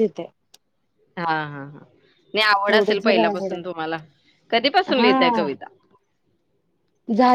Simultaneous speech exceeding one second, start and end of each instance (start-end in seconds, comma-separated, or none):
none